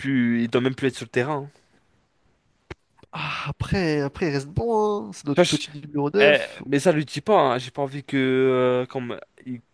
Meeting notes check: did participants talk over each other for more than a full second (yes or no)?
no